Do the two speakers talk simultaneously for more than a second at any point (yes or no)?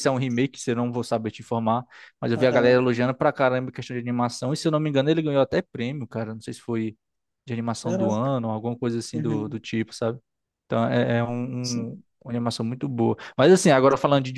no